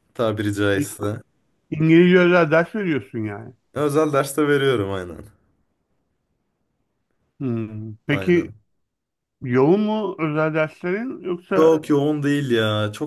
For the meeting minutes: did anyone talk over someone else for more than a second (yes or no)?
no